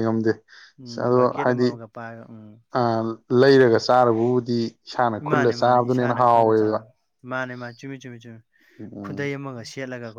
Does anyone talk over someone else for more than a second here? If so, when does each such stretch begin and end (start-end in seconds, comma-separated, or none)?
5.3-6.8